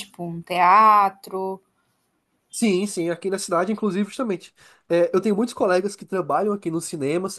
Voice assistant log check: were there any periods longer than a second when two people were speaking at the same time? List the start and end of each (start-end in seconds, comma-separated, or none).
none